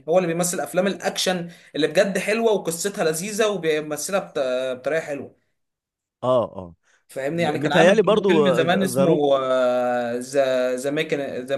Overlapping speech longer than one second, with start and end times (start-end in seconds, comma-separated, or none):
7.3-9.2